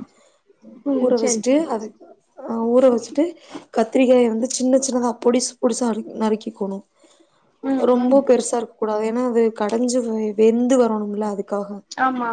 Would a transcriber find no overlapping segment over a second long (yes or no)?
yes